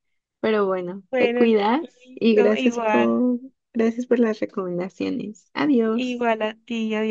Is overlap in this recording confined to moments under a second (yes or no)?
no